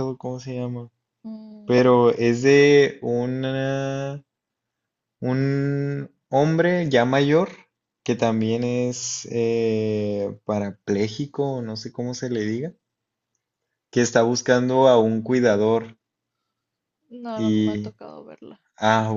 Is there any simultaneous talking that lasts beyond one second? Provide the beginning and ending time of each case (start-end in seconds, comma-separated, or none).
none